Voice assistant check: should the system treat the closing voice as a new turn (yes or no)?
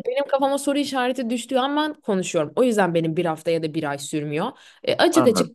no